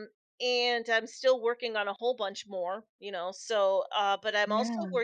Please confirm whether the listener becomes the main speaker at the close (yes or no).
no